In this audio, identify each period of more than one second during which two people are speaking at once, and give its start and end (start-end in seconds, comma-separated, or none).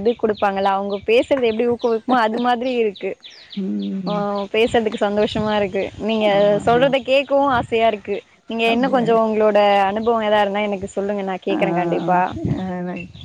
none